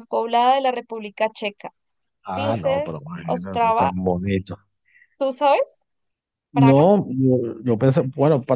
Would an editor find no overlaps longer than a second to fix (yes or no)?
no